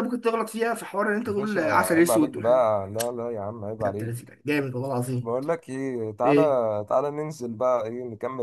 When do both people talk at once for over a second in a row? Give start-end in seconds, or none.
1.3-2.7